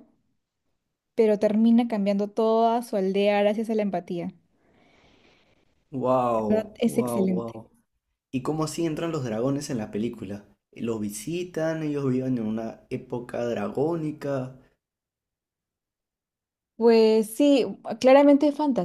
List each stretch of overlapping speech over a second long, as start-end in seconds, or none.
6.3-7.6